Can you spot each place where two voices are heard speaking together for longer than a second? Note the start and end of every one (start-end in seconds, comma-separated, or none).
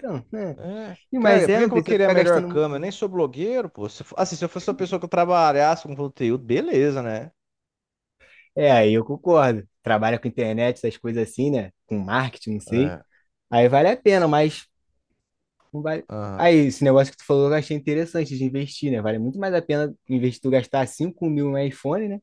1.1-3.0